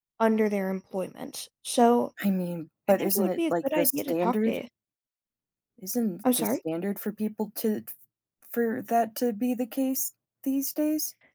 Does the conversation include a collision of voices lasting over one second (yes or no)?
yes